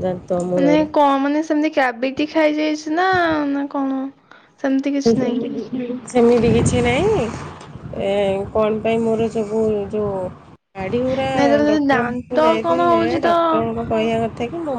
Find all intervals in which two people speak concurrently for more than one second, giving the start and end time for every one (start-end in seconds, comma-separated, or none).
11.7-13.3